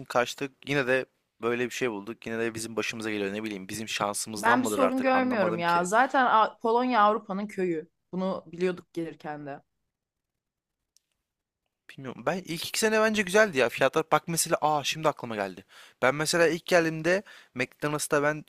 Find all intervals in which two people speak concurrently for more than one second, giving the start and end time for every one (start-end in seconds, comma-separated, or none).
4.4-5.9